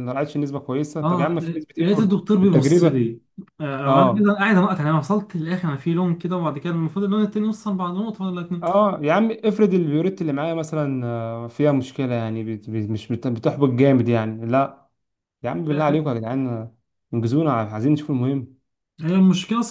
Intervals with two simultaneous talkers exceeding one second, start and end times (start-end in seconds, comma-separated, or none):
1.0-3.0